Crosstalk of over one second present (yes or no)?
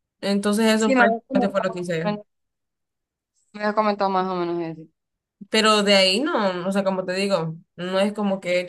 yes